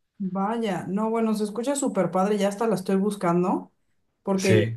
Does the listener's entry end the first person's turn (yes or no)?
no